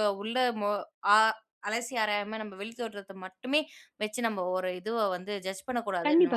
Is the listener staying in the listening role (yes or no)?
no